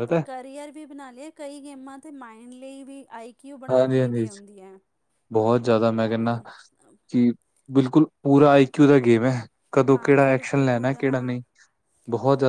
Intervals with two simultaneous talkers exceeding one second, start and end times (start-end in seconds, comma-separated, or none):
9.9-11.4